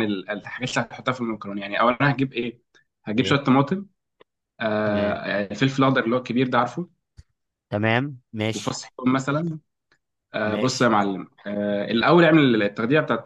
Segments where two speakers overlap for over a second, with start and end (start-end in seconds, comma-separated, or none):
none